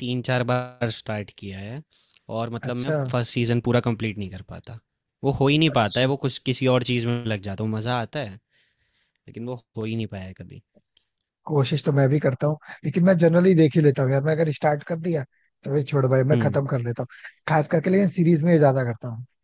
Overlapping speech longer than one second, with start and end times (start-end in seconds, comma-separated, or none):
none